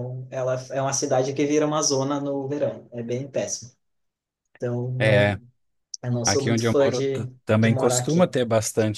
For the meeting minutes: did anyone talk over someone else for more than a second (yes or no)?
yes